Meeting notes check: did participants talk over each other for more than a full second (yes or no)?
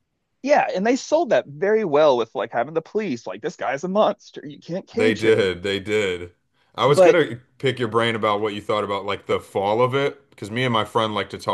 no